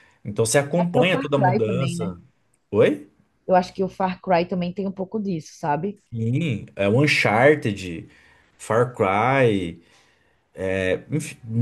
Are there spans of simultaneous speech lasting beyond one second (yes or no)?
yes